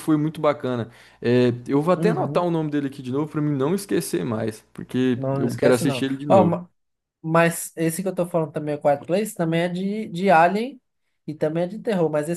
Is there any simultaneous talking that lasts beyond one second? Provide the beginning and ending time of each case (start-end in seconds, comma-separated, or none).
5.2-6.6